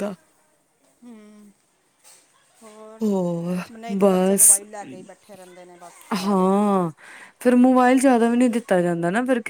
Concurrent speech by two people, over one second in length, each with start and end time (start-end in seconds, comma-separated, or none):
none